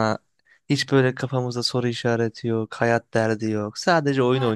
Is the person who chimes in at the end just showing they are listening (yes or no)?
no